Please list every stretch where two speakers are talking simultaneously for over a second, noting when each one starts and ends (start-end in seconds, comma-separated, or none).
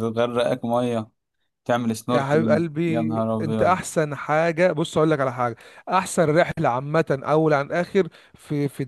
2.1-3.8